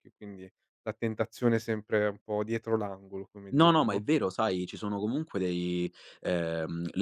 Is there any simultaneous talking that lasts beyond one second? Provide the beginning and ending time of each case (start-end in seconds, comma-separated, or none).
none